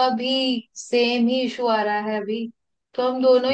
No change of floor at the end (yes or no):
yes